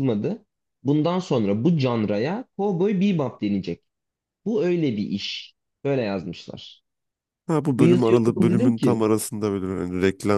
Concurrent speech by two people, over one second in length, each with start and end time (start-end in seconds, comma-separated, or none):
7.8-9.0